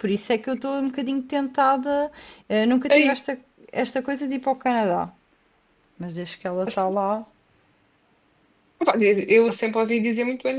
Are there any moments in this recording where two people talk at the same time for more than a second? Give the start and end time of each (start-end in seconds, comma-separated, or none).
none